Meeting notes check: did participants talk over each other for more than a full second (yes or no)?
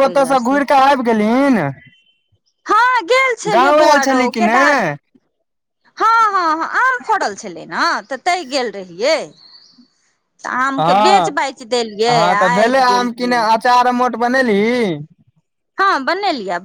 no